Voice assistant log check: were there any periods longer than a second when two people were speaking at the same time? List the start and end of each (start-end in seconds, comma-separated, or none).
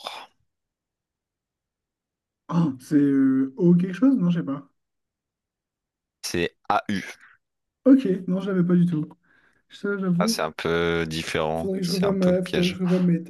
11.5-12.8